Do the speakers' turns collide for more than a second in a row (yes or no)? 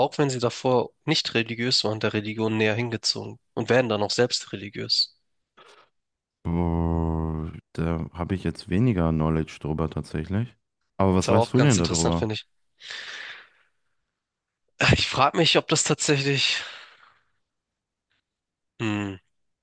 yes